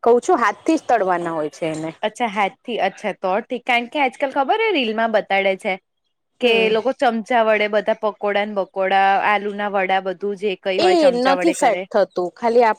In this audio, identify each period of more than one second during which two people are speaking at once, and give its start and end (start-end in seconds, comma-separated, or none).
none